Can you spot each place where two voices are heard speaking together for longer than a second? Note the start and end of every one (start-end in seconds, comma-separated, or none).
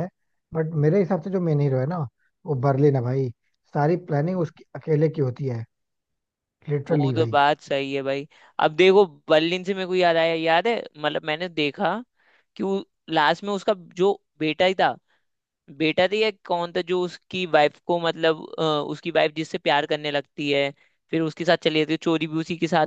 none